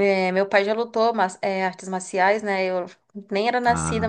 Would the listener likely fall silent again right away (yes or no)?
yes